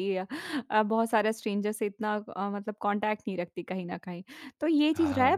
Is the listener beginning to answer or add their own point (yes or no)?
no